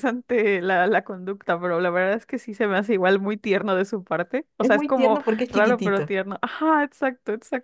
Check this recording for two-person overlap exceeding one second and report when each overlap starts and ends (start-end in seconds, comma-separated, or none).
4.6-6.1